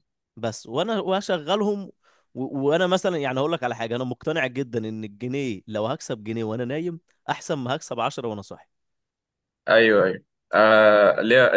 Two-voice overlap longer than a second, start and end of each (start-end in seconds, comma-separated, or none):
none